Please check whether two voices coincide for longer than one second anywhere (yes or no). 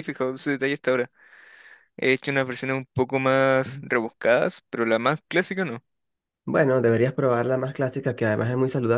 no